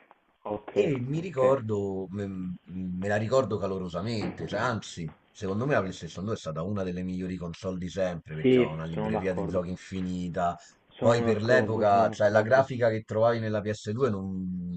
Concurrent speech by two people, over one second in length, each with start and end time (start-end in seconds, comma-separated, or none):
8.4-9.6, 11.0-12.7